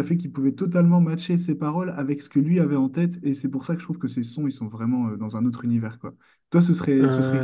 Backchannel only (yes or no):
yes